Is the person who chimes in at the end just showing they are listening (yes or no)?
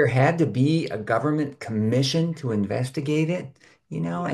yes